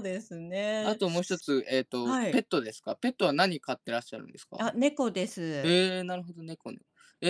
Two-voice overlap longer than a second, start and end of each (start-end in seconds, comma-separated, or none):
none